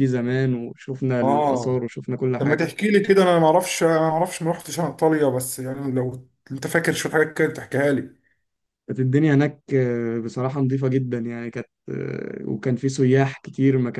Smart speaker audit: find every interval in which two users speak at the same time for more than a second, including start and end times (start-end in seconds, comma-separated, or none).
none